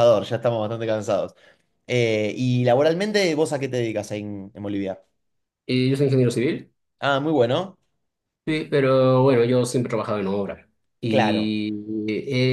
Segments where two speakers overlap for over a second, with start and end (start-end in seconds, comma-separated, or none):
none